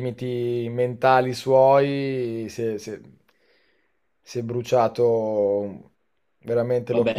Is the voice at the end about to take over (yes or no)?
yes